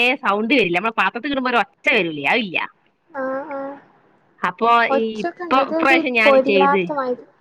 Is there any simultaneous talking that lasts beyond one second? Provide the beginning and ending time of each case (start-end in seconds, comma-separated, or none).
5.0-6.8